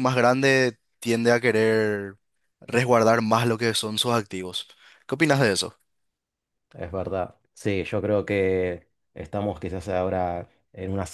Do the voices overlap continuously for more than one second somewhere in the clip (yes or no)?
no